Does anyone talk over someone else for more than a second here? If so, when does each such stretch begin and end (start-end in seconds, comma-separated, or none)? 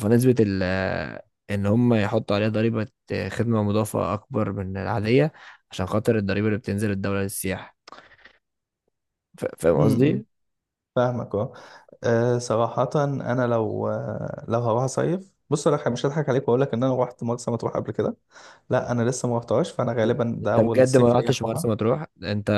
20.4-21.7